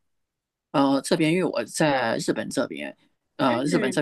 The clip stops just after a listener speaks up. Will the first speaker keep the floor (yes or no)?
yes